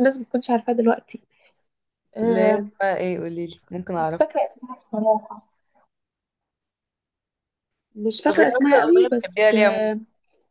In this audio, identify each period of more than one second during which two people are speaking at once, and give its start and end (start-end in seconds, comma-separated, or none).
8.3-9.9